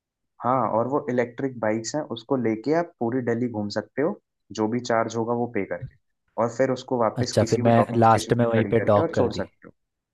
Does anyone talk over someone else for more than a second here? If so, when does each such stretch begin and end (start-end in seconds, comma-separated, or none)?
7.2-9.5